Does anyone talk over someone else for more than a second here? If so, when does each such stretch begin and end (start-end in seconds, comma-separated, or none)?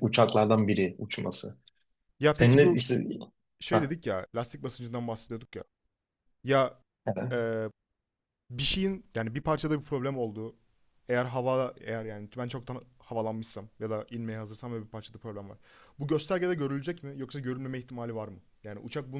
none